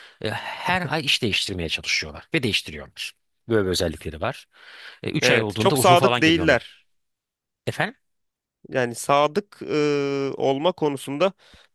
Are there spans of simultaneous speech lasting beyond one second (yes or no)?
yes